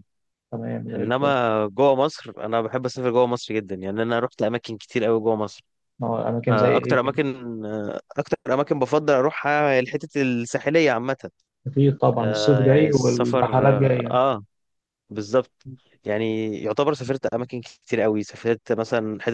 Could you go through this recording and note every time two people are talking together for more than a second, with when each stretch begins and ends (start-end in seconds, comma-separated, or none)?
12.2-14.2